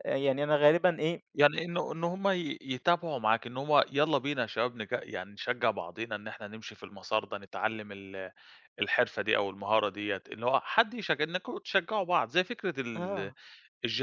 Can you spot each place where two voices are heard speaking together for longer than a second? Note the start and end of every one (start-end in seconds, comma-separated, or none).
none